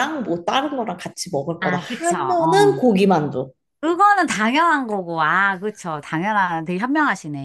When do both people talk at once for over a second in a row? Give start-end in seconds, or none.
1.6-2.9